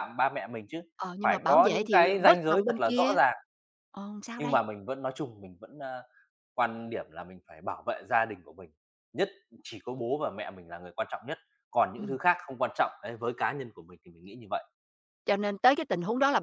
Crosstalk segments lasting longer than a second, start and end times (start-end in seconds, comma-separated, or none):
1.2-3.2